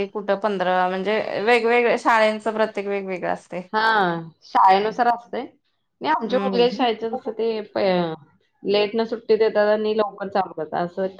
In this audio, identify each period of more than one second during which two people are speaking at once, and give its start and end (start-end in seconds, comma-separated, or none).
none